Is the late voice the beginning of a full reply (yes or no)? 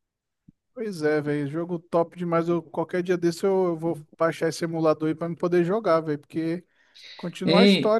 yes